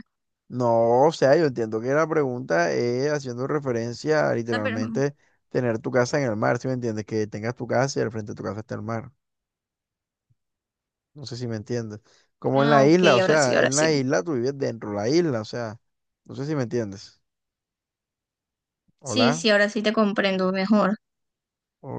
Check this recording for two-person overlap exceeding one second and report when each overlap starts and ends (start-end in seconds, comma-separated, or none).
12.5-14.0